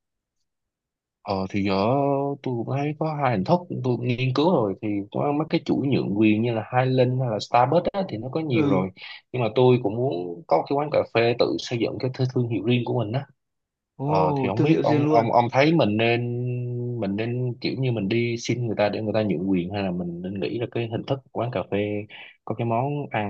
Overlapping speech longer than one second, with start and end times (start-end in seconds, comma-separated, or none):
14.1-15.3